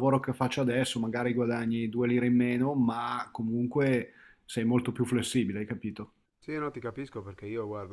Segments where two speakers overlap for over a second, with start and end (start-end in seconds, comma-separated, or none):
none